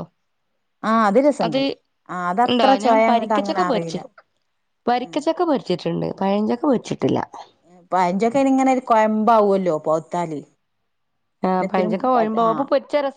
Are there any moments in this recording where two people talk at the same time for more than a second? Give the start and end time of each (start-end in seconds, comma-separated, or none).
2.5-4.0